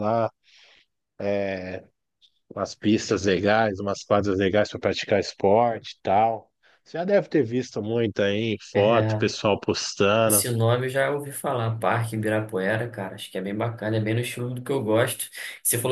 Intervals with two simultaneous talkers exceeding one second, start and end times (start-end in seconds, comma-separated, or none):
none